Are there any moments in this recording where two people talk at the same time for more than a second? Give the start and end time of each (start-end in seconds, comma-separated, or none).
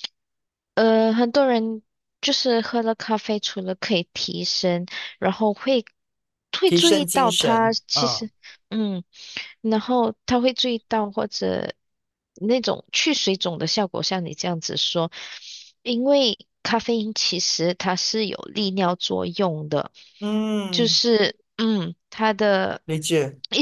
6.7-8.3